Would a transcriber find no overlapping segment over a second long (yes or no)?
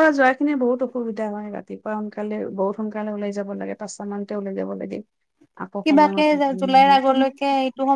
yes